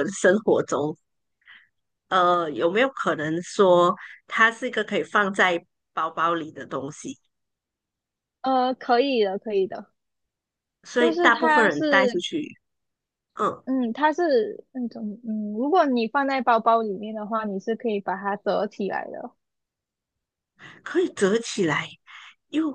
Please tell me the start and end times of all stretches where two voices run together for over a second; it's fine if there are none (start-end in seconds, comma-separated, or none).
11.0-12.2